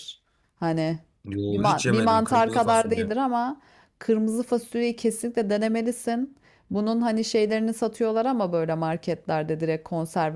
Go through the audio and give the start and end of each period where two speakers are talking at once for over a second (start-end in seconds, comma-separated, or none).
1.5-3.1